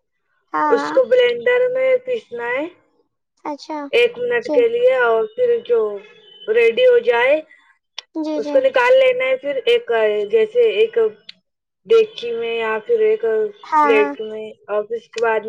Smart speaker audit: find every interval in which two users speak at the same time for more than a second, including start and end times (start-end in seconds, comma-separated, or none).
none